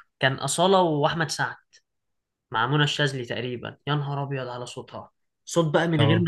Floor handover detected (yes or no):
no